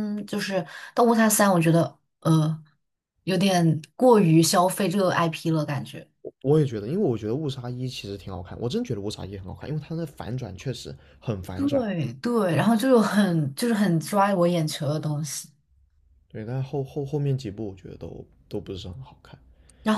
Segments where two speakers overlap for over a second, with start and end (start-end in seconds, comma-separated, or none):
none